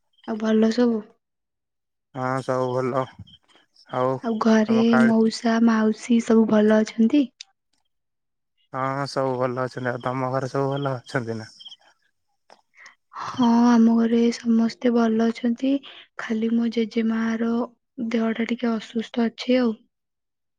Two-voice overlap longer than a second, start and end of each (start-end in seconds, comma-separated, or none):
none